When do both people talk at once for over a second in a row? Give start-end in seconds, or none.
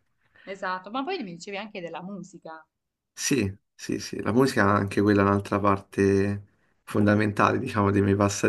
none